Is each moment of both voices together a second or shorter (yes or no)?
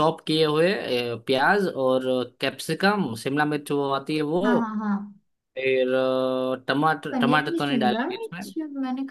no